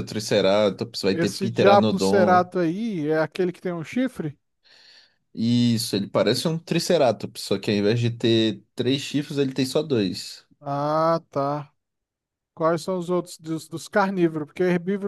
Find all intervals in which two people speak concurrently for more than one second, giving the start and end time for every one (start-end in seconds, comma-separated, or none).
1.1-2.5